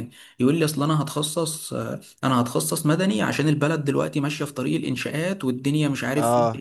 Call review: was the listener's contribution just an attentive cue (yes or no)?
yes